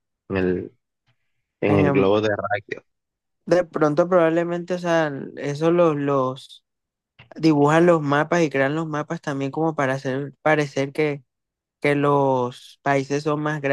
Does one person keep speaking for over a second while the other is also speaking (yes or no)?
no